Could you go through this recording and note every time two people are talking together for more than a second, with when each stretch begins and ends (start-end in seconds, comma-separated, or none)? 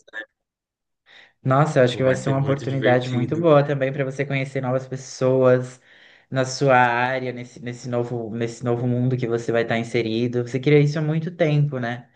1.8-3.4